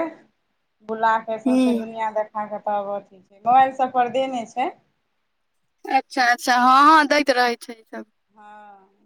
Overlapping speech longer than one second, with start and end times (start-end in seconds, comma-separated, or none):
none